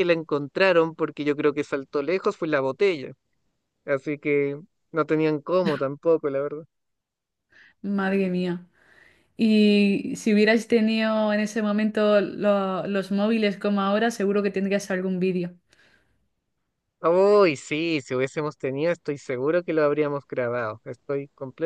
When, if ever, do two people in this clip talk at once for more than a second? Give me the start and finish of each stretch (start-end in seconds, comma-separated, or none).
none